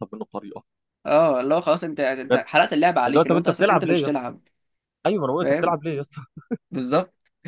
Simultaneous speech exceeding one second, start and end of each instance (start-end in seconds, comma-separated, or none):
3.1-4.3